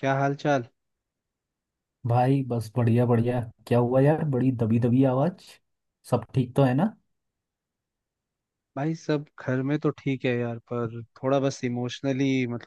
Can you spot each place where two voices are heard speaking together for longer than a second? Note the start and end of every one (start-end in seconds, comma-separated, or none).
none